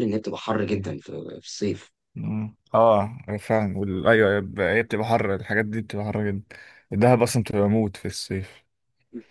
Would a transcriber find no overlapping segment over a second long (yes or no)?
yes